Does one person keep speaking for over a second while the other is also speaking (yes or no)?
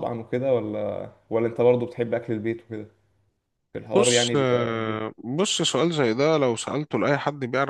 yes